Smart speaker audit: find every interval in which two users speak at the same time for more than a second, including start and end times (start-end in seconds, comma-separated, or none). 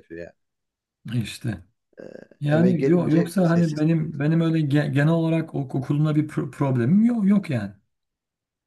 2.5-3.8